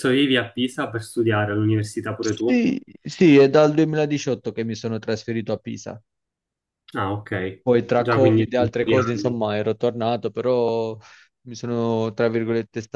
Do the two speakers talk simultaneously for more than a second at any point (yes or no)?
yes